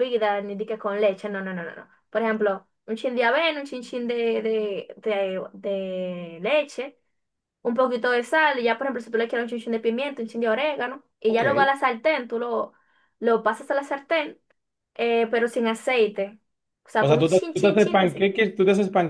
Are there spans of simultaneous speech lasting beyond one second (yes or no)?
yes